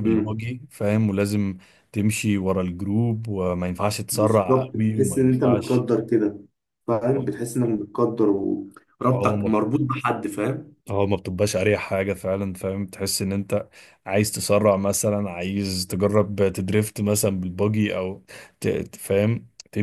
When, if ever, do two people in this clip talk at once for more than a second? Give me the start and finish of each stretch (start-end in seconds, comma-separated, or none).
4.1-5.8